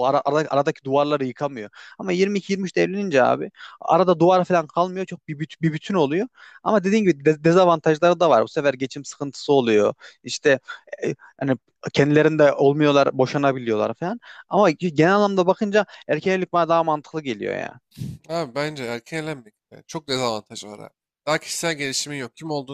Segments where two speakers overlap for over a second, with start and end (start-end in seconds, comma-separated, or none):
none